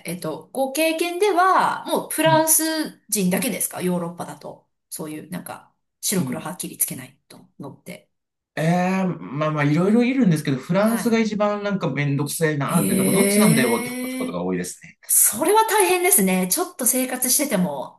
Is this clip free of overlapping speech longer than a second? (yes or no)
no